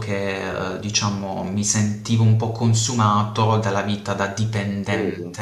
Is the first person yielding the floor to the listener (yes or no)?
no